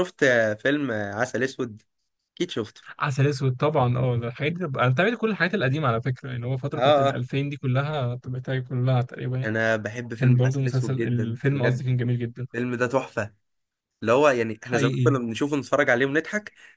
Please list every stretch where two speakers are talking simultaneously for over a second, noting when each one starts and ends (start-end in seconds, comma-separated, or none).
10.2-11.8